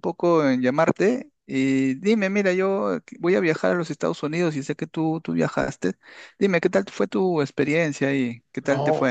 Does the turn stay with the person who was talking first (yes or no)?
no